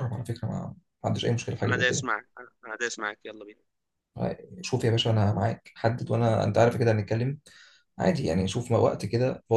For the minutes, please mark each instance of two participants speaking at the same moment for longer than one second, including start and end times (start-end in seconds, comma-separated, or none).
none